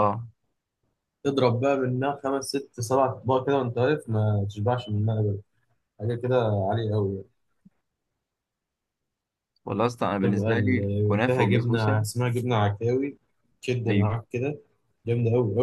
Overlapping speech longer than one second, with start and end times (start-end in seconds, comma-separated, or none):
10.2-12.1